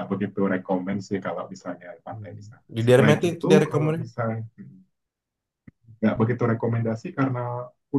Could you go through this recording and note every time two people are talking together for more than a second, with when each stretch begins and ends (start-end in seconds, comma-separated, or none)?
2.1-3.9